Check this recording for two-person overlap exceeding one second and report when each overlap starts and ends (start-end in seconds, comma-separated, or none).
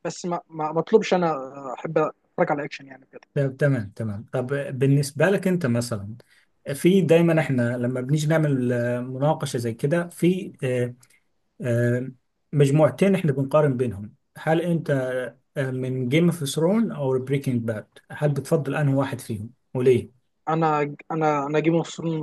none